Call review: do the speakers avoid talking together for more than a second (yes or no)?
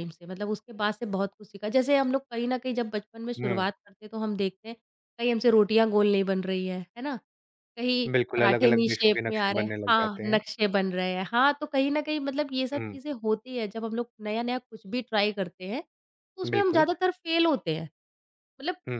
no